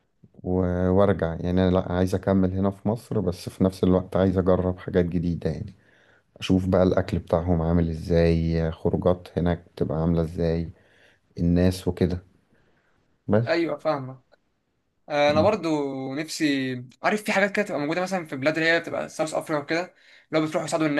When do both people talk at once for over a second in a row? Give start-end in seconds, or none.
none